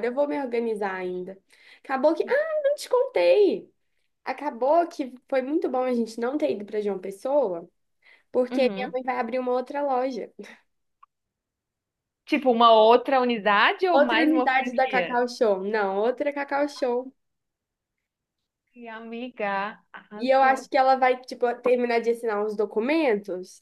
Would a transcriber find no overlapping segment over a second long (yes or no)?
no